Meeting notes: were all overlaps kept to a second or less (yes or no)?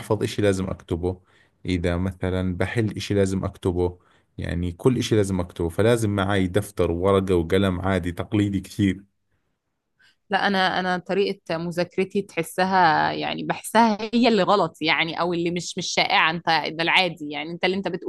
yes